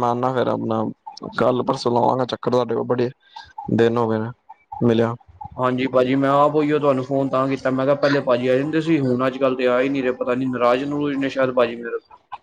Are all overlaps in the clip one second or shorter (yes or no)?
yes